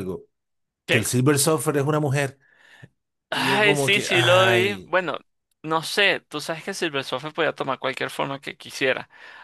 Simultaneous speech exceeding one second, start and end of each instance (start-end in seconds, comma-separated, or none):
3.3-4.9